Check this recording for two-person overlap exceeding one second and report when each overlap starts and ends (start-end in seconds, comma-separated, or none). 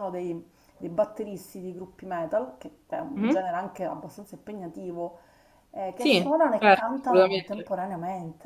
6.0-7.8